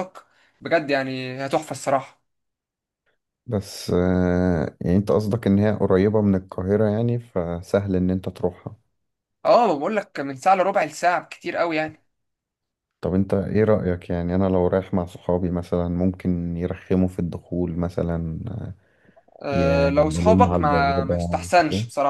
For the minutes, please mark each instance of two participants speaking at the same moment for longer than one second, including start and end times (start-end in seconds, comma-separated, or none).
19.5-21.5